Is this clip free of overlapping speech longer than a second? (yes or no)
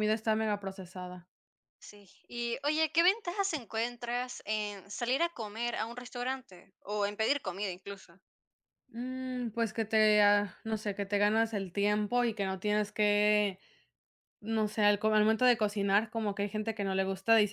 yes